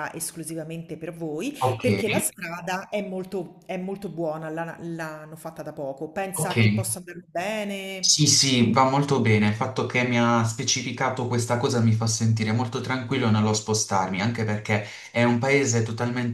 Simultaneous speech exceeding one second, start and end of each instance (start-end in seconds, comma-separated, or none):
none